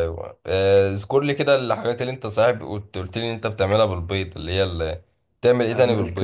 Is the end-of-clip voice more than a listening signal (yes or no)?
yes